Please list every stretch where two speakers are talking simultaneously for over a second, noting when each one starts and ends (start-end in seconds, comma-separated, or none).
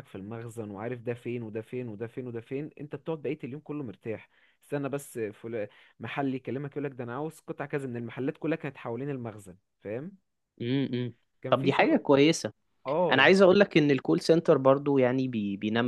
none